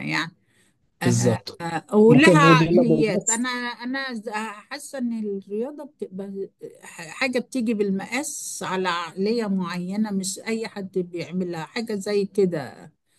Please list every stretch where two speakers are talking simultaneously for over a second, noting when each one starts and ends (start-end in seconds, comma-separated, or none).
2.1-3.5